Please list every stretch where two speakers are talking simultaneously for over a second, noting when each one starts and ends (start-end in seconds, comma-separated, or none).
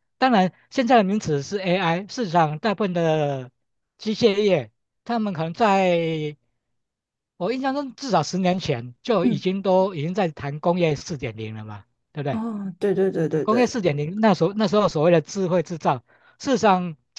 none